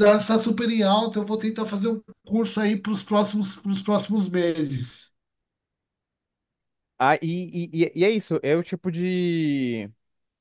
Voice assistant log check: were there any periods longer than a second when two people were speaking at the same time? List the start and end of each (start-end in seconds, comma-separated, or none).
none